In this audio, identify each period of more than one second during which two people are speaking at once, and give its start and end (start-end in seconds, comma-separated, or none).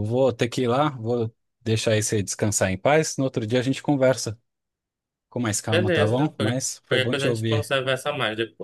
5.7-7.7